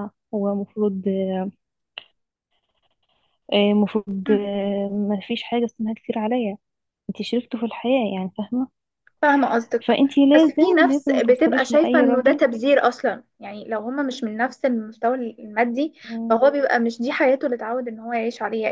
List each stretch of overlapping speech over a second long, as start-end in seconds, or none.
9.9-12.4